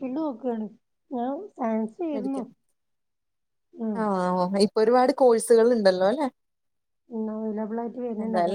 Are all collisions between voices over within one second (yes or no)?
yes